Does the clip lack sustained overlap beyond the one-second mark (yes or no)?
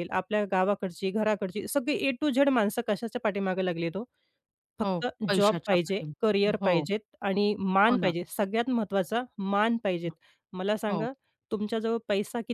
no